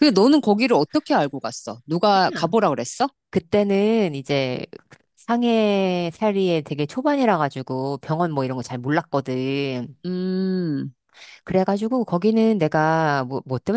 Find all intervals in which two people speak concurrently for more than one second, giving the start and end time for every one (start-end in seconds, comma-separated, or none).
none